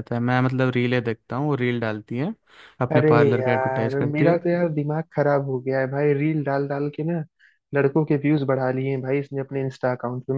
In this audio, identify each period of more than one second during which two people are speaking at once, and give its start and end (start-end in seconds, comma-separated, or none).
3.0-4.3